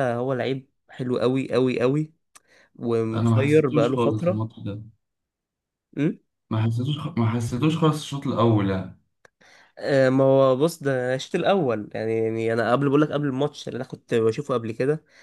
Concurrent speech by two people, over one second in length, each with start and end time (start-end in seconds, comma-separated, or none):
3.1-4.5